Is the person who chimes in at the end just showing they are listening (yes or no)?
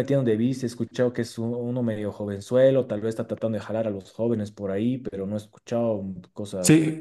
no